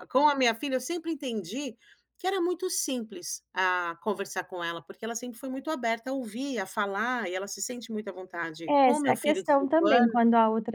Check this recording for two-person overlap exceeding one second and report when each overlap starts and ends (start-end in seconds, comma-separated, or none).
8.7-10.2